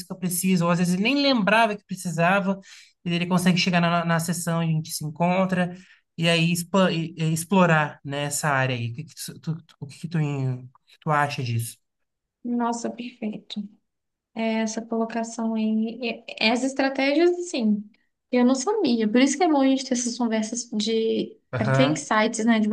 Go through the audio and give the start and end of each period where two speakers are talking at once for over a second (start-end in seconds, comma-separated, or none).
none